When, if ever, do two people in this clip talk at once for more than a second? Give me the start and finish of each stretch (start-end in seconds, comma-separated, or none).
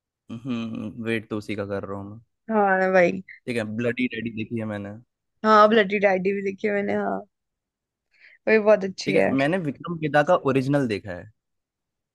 none